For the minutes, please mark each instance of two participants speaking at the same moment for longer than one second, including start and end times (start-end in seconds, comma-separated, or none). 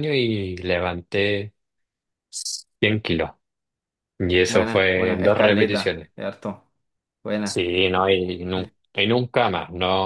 4.4-6.1